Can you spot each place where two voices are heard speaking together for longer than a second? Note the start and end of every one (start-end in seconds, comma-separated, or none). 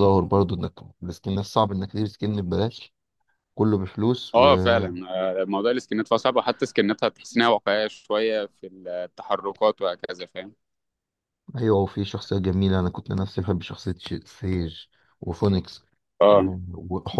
none